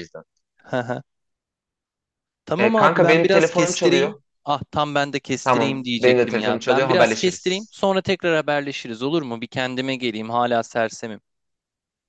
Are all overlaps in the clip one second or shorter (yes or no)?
no